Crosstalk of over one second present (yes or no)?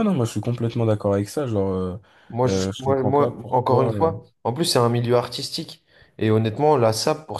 yes